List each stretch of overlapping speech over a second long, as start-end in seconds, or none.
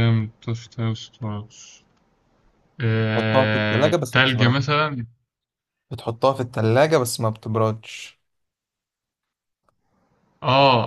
3.1-4.6